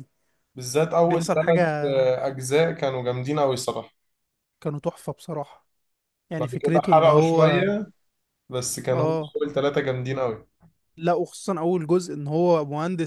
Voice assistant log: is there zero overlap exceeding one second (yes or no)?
no